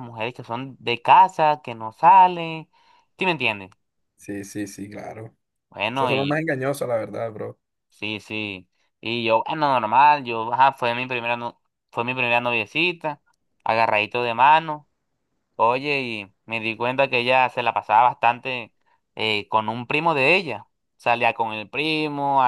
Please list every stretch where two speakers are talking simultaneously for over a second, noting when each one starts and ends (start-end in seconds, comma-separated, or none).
none